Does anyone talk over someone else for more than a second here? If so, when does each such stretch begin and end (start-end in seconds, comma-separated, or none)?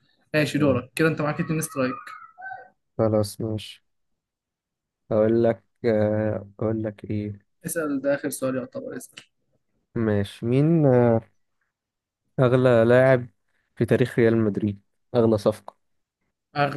none